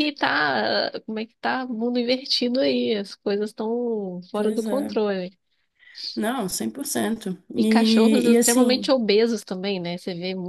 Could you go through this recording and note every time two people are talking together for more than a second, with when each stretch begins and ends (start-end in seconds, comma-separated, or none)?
7.6-8.9